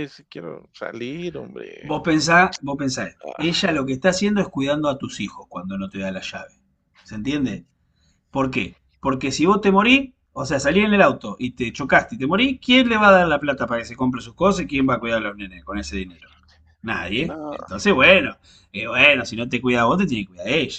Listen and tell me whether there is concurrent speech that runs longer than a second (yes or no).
no